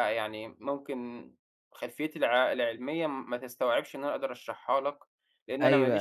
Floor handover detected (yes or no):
yes